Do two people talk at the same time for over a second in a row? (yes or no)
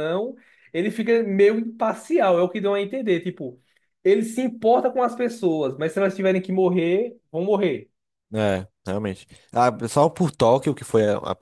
no